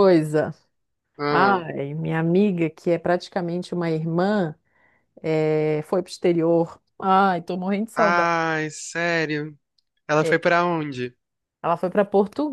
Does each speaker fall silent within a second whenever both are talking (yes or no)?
yes